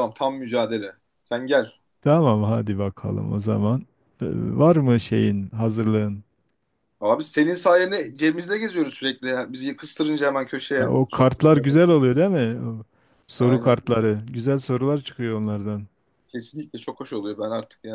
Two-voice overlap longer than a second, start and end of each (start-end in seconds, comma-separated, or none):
10.8-12.1